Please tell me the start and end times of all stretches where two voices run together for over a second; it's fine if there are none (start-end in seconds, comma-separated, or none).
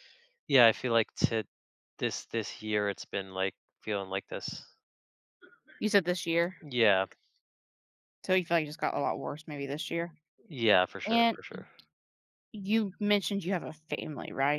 none